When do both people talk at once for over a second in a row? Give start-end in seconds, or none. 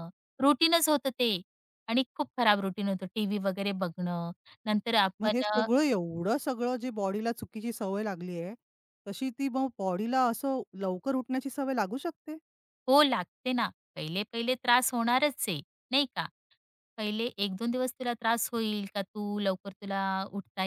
none